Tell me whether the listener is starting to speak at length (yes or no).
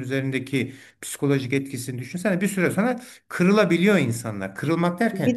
no